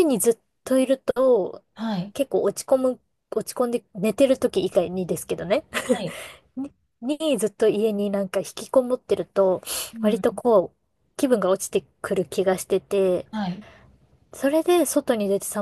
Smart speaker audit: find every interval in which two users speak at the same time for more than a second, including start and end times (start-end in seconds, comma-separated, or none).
none